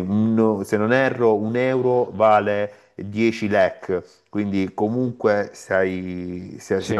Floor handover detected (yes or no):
no